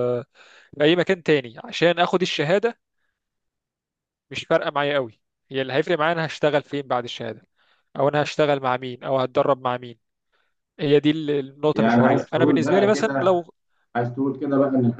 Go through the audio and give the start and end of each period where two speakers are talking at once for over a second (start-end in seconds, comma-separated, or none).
11.7-13.4